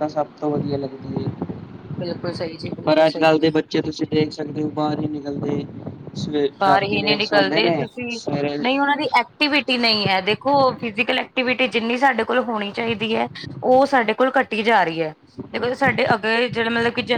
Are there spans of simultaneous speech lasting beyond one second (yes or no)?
yes